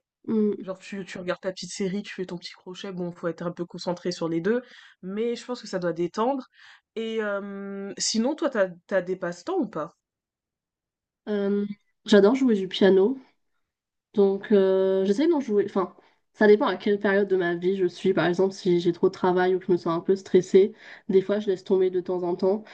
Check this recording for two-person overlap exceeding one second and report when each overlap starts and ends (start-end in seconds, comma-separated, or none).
none